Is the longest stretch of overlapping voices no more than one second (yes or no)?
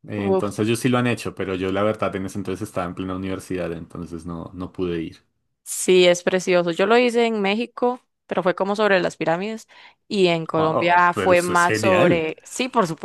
no